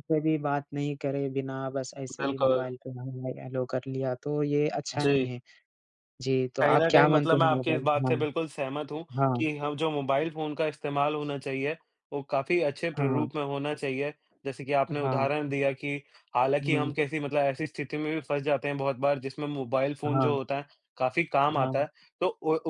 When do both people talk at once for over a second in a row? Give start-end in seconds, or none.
6.6-8.2